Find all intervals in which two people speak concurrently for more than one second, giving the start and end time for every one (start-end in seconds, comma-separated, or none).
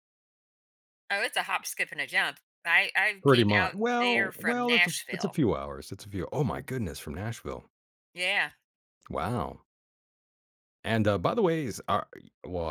3.2-5.4